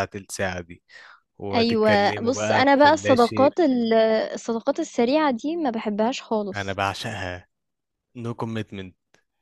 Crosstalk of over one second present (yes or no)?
yes